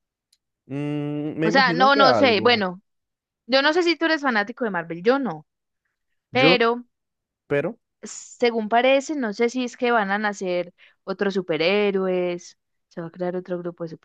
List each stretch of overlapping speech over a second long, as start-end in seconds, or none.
1.4-2.7